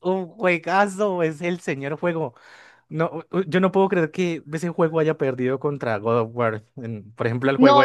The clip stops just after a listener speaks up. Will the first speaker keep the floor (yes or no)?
no